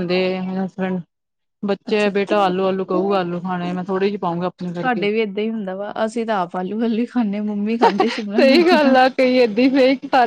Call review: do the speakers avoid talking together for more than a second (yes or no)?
no